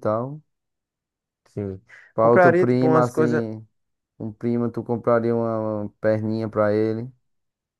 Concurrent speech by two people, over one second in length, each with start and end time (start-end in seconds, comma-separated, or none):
2.2-3.4